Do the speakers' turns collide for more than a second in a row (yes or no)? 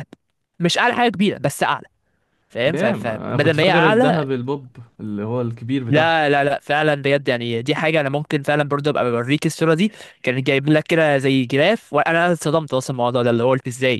yes